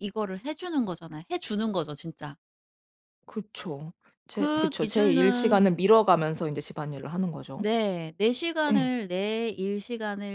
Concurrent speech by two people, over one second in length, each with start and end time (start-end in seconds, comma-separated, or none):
4.4-5.6